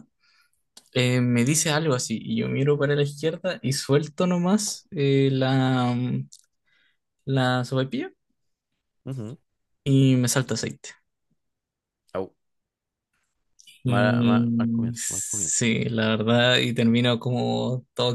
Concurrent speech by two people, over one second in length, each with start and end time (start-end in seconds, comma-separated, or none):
13.9-15.7